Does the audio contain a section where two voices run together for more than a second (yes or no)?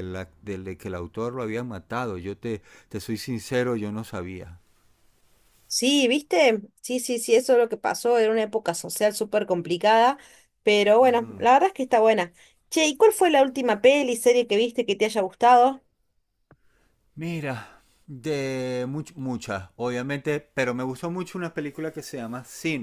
no